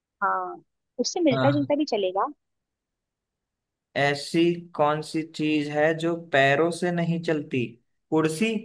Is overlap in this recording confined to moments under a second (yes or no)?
yes